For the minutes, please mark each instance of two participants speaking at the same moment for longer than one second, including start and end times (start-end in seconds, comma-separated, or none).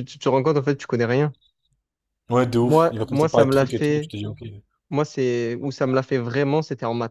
2.6-4.1